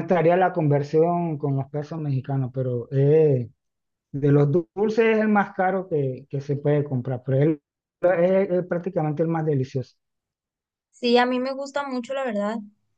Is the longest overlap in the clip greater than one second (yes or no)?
no